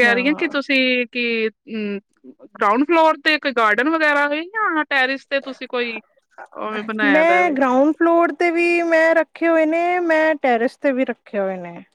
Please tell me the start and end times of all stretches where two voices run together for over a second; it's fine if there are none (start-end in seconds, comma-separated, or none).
none